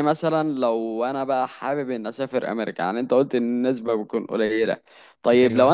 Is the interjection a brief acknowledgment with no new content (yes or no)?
yes